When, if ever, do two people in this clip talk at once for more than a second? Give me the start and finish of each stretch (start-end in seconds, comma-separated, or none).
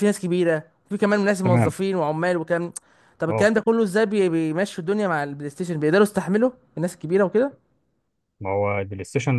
none